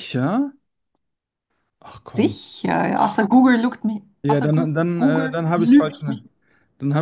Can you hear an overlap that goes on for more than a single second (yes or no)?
yes